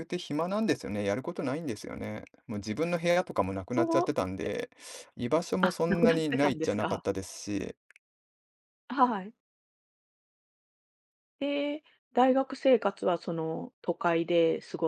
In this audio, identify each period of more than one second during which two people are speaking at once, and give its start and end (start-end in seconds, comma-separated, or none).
5.6-7.0